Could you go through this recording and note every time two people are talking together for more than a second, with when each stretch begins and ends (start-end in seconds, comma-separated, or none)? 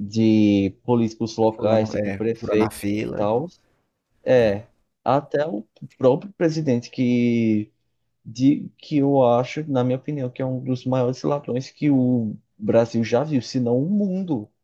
1.5-3.3